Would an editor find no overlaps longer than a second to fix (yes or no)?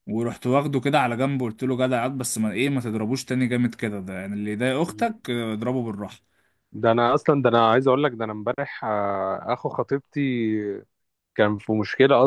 yes